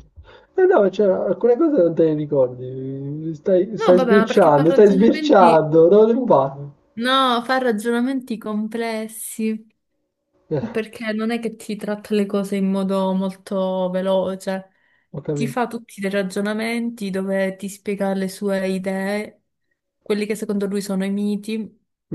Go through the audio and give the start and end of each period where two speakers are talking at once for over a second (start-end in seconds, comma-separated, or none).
3.8-5.7